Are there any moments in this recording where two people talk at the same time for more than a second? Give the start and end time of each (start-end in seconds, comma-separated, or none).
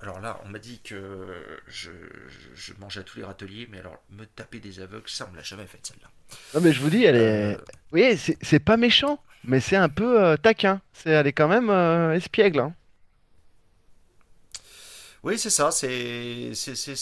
none